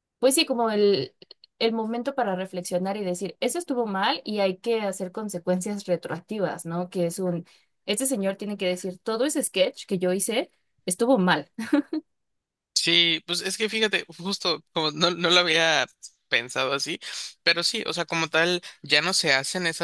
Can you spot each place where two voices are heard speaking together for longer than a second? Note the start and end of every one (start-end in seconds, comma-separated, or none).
none